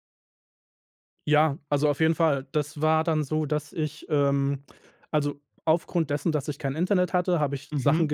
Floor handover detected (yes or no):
no